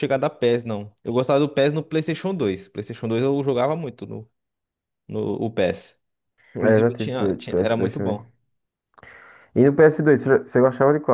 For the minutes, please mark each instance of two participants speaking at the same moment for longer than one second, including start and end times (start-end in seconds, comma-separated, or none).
6.6-8.2